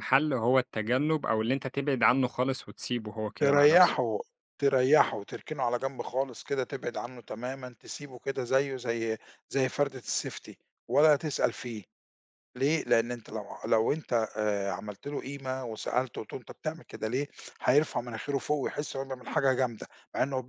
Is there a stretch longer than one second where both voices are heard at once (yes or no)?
no